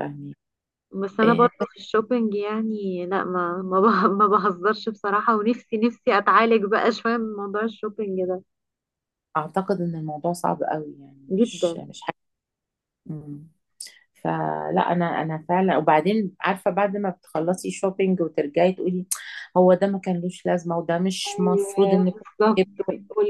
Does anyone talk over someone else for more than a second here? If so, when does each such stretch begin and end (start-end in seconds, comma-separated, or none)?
21.3-22.6